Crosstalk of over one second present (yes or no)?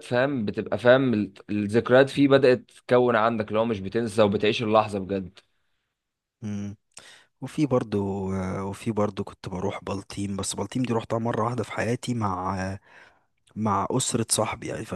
no